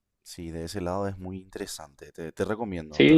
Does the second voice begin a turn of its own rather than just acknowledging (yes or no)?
yes